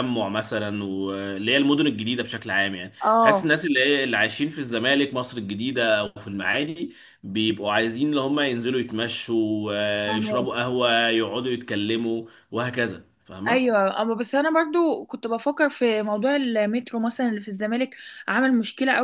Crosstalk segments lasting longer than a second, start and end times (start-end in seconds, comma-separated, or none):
none